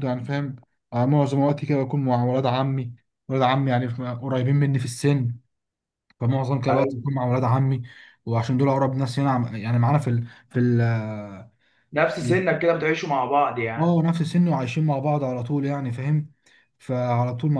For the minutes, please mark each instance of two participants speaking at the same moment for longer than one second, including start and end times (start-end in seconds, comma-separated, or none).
none